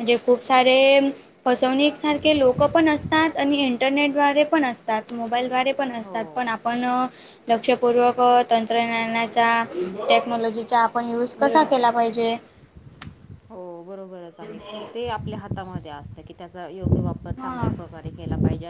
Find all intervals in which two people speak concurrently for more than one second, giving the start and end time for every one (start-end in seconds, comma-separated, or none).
none